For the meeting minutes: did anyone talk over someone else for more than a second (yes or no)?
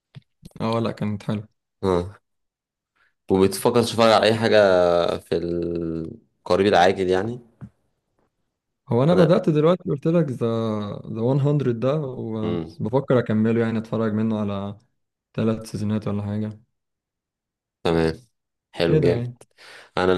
no